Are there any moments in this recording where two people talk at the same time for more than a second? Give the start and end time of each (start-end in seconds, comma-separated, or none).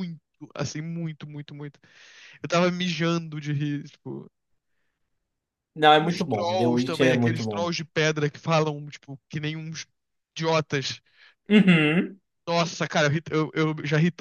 6.0-7.7